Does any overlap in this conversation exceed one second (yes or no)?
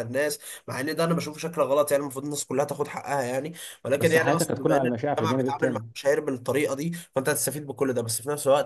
yes